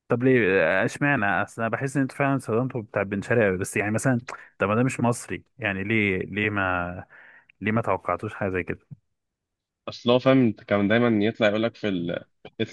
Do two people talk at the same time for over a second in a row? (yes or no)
no